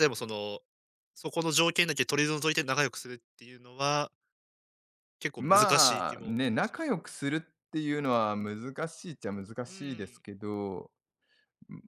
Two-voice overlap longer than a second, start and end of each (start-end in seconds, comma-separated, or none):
5.4-7.0